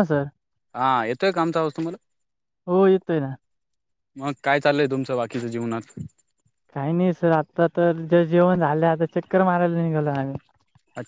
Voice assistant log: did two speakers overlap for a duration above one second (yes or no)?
no